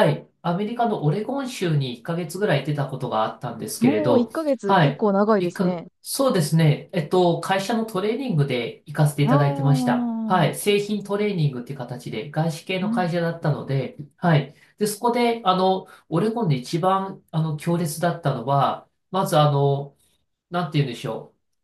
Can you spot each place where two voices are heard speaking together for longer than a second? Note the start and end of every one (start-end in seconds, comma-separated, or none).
3.8-5.9, 9.2-10.5